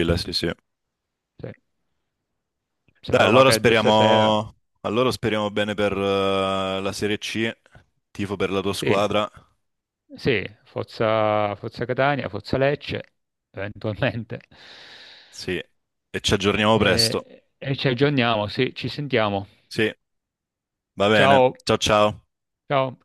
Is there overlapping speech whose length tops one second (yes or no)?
yes